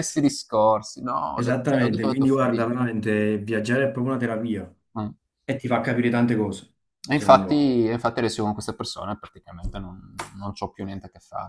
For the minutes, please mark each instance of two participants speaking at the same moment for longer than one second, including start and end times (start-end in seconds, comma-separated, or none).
1.3-2.6